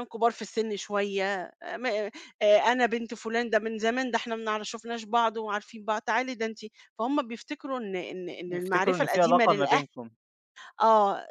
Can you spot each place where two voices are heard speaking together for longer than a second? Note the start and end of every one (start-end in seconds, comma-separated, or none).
8.5-9.8